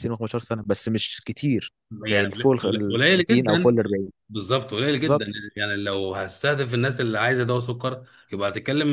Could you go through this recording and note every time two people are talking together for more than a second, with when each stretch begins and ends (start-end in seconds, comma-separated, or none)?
2.1-3.8